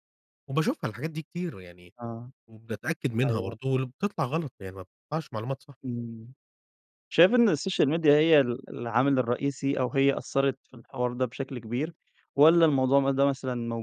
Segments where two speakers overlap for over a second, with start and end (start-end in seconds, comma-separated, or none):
none